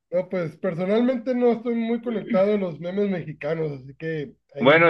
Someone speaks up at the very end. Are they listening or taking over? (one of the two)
taking over